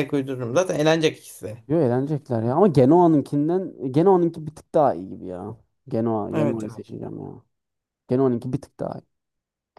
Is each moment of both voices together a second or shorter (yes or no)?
yes